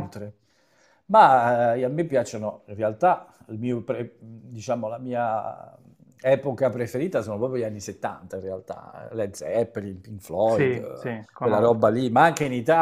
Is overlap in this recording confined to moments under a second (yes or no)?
no